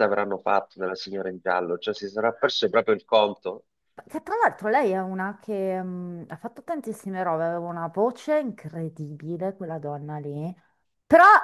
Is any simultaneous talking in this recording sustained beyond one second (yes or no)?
no